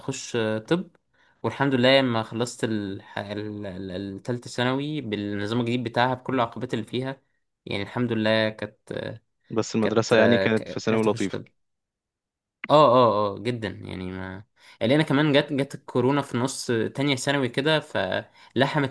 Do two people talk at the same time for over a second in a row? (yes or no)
yes